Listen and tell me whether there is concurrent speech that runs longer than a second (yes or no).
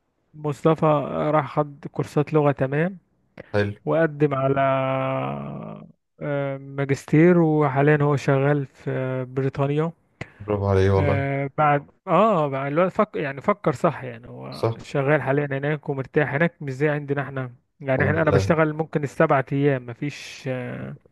no